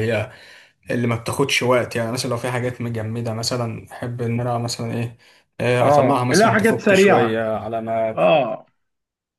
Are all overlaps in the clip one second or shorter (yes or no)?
no